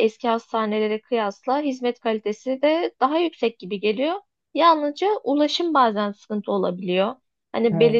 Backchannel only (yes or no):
yes